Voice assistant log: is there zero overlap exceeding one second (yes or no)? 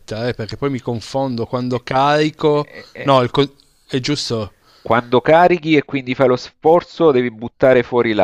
no